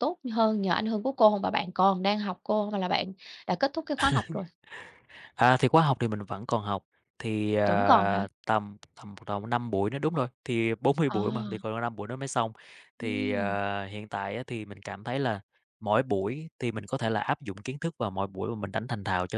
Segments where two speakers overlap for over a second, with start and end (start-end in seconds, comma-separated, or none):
none